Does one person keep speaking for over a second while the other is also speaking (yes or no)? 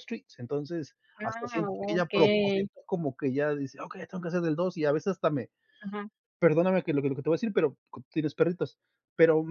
yes